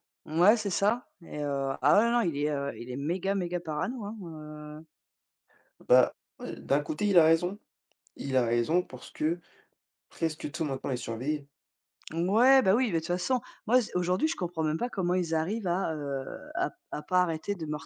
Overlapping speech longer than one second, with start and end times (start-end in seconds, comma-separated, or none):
none